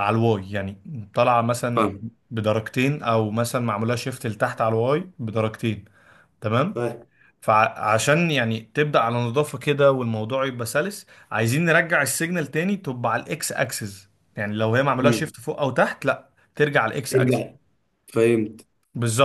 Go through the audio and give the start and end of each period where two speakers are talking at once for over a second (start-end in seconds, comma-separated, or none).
none